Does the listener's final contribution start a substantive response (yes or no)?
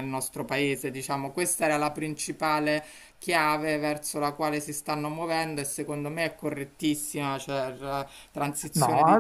yes